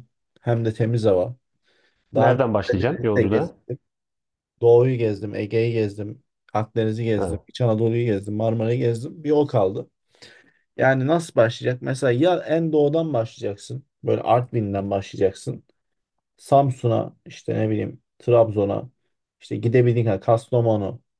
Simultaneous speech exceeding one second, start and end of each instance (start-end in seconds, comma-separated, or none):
2.1-3.5